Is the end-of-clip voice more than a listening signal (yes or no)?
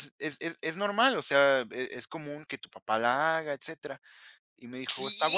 no